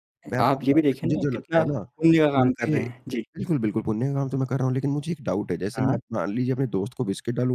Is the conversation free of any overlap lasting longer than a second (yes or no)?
no